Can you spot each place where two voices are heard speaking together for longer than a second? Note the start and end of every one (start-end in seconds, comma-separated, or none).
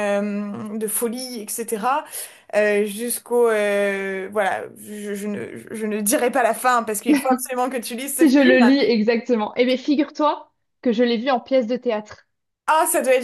none